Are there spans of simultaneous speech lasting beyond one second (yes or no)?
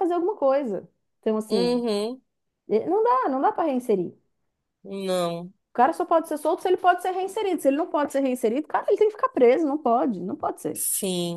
no